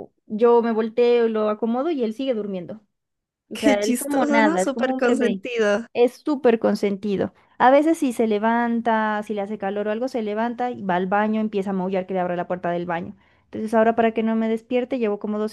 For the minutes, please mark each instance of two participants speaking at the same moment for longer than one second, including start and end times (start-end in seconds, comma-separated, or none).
3.5-5.4